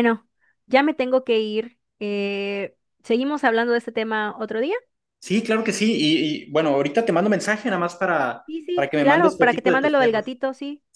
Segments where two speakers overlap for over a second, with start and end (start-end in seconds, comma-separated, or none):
8.4-10.2